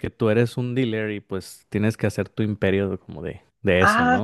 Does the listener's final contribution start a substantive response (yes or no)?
yes